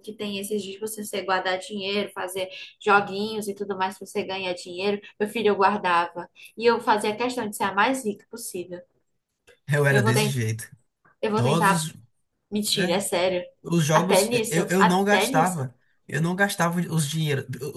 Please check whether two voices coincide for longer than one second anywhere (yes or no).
yes